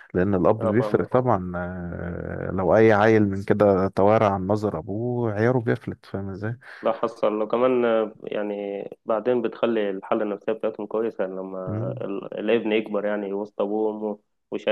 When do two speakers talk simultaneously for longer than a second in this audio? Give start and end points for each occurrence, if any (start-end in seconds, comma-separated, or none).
none